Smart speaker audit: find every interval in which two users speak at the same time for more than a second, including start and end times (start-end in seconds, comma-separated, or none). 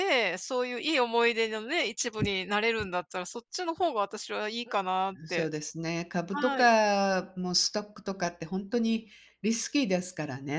none